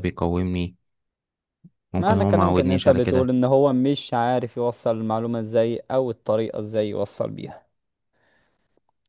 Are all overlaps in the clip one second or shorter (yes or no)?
no